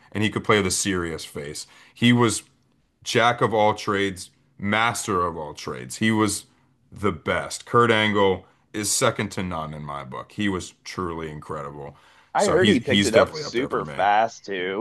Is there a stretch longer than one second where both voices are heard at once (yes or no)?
yes